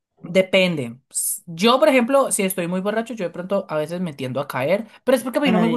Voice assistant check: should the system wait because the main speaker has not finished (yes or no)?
yes